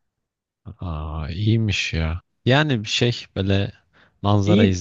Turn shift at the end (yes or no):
no